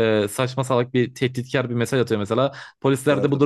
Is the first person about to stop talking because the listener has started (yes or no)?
no